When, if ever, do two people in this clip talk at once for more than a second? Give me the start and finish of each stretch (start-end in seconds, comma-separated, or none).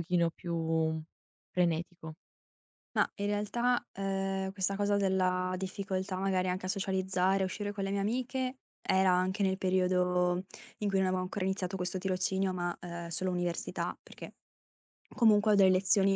none